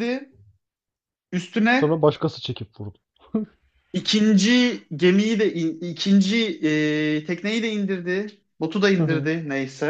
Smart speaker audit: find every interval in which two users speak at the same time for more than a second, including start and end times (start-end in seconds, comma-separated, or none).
none